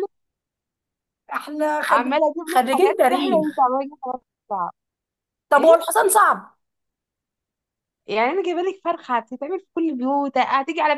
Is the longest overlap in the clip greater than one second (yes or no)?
yes